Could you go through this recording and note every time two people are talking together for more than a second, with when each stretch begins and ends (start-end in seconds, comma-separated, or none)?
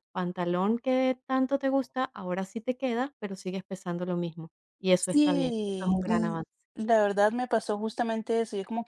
5.0-6.4